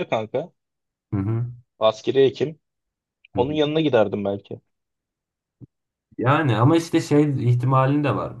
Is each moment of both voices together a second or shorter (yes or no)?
yes